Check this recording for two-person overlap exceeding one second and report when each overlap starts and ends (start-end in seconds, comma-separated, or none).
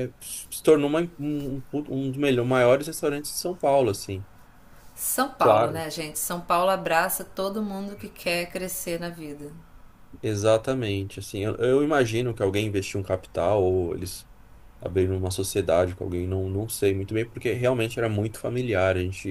none